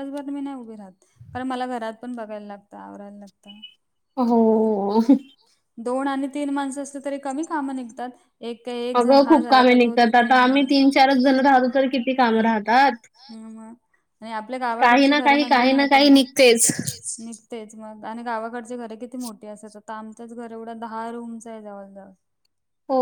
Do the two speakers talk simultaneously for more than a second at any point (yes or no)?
yes